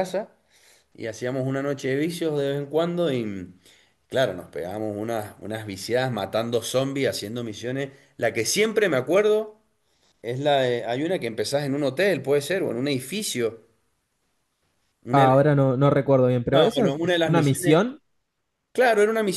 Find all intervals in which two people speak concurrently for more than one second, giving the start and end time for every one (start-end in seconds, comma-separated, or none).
16.5-17.8